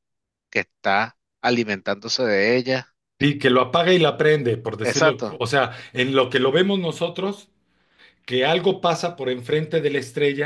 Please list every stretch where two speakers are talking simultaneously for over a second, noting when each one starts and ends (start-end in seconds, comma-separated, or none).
none